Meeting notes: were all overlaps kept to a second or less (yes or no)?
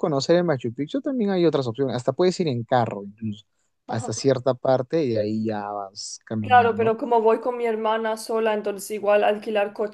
yes